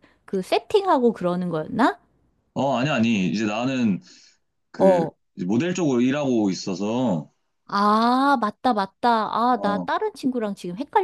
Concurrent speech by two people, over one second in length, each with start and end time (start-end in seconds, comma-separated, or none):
none